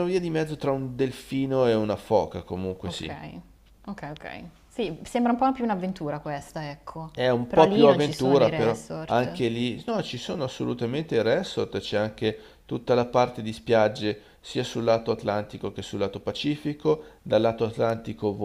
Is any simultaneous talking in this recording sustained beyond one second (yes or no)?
yes